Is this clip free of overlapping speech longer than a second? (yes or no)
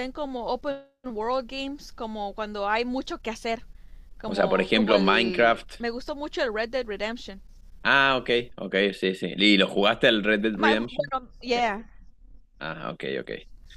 no